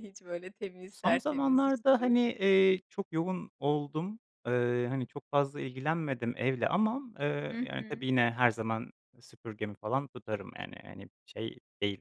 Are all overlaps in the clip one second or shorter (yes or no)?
no